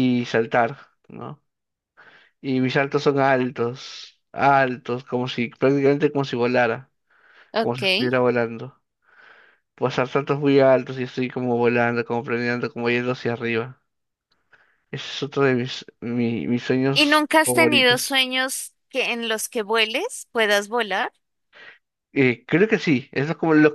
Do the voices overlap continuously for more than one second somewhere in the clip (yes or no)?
yes